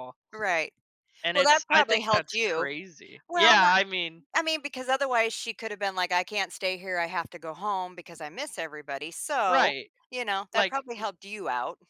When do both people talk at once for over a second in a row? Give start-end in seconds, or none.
1.3-2.7